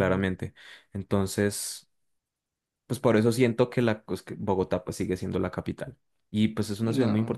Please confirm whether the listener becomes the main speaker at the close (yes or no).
no